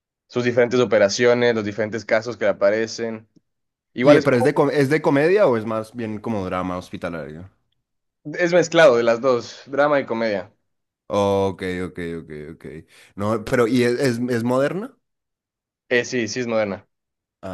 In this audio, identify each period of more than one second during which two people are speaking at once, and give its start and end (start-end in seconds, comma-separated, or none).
none